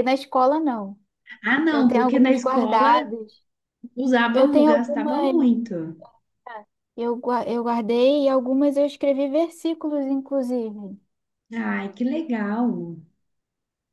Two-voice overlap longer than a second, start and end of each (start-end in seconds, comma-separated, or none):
1.7-3.1, 4.3-5.7